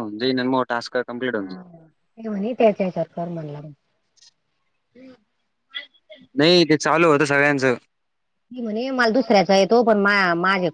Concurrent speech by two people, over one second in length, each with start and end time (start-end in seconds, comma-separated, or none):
none